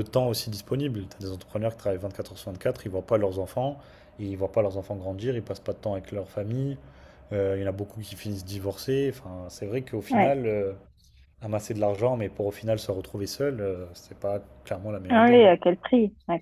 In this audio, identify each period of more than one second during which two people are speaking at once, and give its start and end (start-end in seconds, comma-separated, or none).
none